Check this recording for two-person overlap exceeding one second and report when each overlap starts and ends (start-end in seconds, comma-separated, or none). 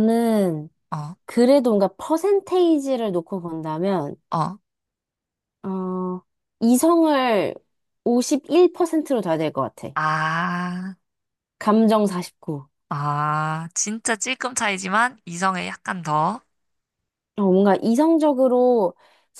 none